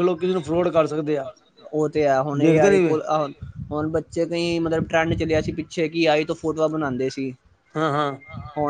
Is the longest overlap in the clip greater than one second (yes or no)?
no